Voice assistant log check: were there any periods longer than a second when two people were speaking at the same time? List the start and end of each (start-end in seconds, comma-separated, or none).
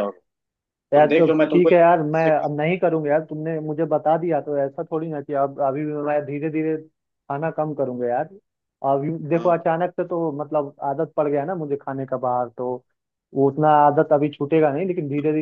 0.9-2.5